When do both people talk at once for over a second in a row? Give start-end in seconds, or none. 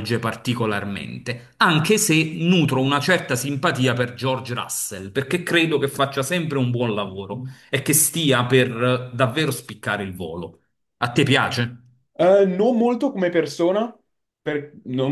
none